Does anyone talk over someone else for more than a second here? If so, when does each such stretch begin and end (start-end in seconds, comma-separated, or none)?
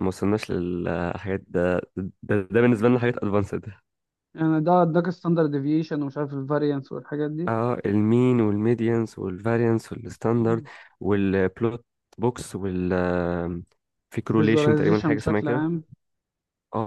14.4-15.7